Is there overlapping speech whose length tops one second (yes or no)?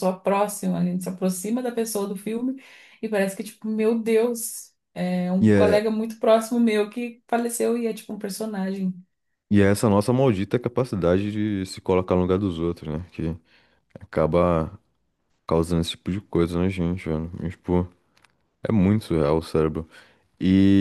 no